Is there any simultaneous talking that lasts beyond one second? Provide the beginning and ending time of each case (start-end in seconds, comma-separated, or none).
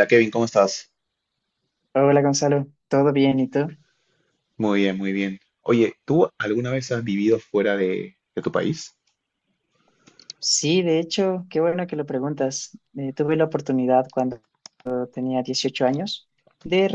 none